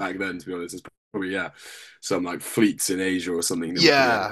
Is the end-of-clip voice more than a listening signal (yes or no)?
yes